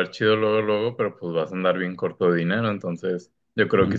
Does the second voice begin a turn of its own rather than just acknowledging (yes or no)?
no